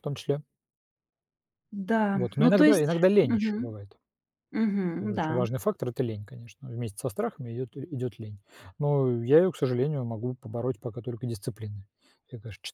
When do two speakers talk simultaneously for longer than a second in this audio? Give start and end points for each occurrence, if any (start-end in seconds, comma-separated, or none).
2.1-3.7